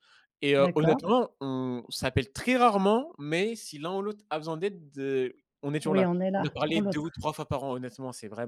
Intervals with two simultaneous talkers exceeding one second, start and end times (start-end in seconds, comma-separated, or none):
5.8-7.2